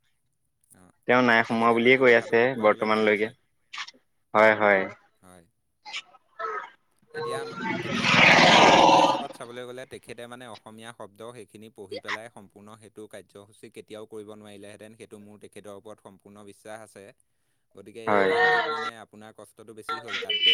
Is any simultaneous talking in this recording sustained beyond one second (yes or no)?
yes